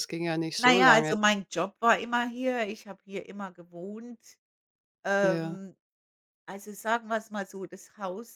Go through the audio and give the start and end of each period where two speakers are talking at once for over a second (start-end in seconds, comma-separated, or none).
none